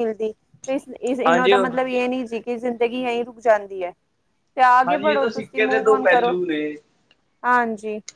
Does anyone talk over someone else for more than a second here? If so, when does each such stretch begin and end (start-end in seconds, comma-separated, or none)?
4.9-6.3